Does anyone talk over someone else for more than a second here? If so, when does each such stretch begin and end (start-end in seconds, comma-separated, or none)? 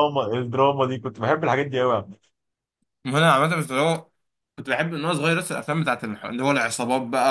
none